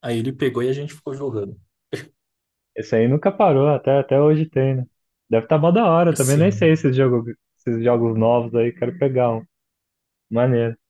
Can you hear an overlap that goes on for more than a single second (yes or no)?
no